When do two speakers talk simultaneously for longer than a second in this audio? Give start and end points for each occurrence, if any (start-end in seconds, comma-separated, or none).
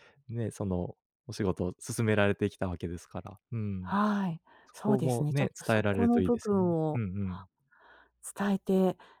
4.7-7.0